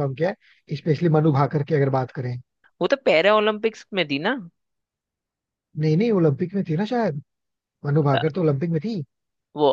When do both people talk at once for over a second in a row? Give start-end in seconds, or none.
none